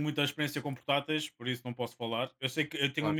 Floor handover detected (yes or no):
no